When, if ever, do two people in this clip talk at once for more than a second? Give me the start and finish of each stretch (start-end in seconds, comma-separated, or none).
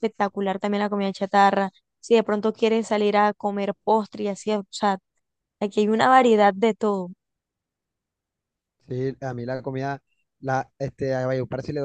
none